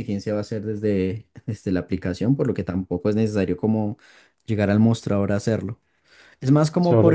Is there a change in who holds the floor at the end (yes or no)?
yes